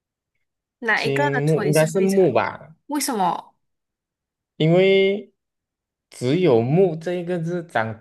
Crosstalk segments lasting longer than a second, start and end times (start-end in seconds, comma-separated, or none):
0.9-2.3